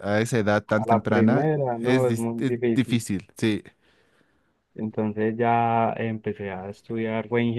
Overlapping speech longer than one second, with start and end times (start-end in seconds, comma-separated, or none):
0.8-3.0